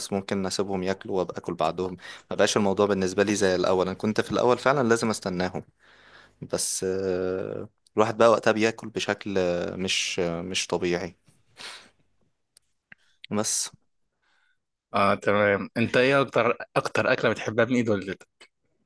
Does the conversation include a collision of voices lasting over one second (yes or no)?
no